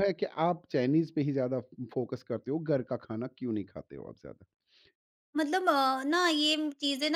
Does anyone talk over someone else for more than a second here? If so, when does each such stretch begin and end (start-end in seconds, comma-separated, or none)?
none